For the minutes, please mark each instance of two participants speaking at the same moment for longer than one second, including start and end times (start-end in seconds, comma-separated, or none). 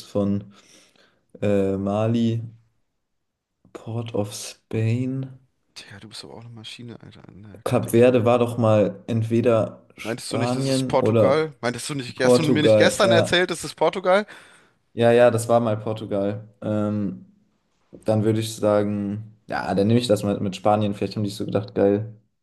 10.0-11.5, 12.1-13.4